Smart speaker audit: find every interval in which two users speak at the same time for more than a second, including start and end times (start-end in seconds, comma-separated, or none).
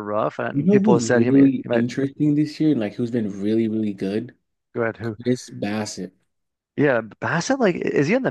0.5-1.9